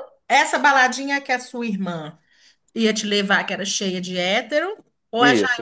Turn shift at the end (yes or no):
yes